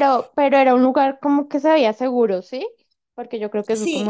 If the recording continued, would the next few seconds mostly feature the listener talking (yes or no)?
yes